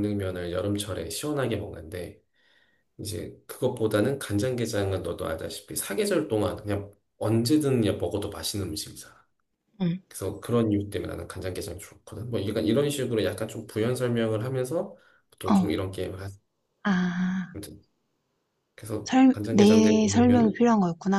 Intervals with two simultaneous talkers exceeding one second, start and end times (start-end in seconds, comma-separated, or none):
19.1-20.6